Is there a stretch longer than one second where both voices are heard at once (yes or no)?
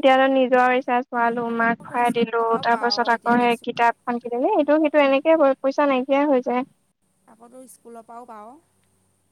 yes